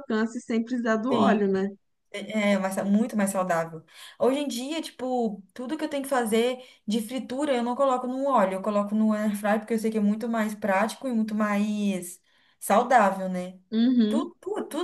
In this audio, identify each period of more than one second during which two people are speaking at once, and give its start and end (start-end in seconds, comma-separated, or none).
none